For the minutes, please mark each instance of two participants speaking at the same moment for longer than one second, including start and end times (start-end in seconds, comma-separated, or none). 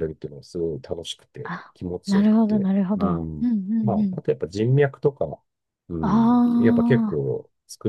1.4-4.2